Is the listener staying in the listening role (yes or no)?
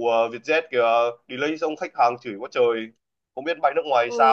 no